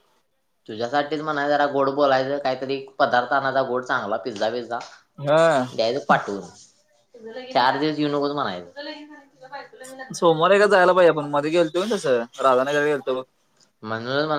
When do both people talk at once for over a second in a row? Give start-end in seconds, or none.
none